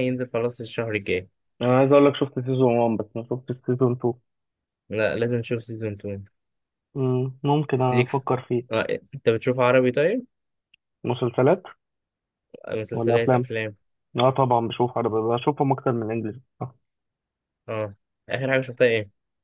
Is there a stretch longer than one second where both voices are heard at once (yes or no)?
no